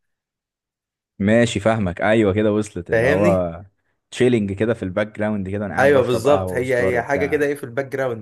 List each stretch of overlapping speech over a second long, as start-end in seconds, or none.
5.8-7.4